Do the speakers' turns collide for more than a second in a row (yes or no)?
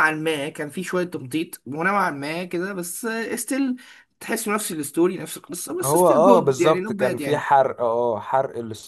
yes